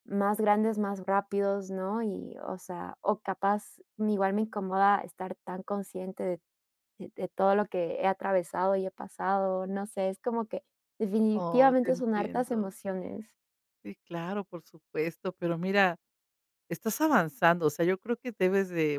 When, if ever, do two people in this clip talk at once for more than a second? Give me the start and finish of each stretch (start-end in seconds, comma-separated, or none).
11.3-12.7